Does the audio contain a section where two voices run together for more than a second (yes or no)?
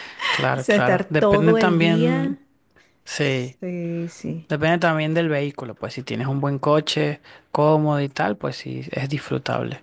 yes